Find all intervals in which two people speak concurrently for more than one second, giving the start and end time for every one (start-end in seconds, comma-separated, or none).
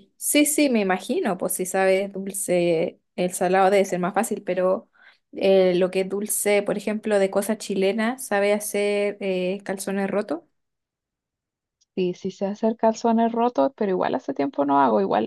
none